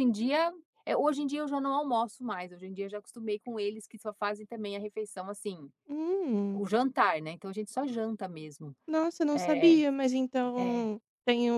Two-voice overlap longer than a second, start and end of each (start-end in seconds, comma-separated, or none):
none